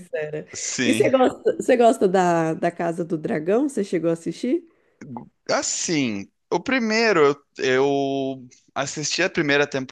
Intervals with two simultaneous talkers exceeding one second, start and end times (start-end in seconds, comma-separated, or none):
none